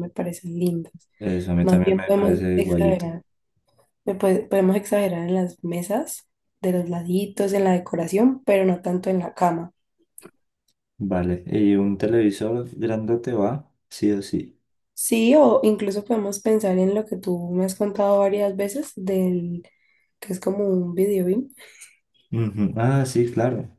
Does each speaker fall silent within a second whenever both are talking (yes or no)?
no